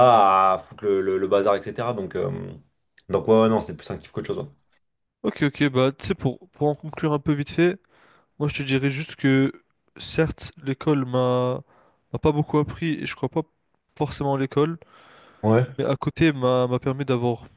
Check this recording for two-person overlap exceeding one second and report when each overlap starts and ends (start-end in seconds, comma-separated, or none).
none